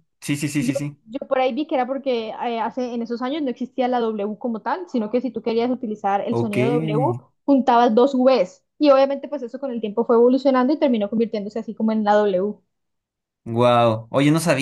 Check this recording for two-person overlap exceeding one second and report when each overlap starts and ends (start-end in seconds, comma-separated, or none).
none